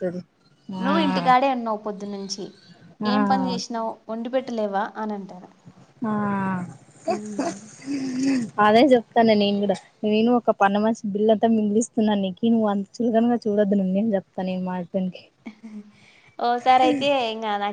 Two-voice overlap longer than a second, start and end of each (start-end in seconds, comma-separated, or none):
none